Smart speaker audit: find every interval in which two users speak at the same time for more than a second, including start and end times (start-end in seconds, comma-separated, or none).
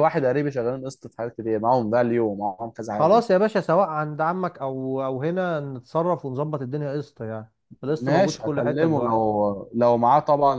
8.0-9.3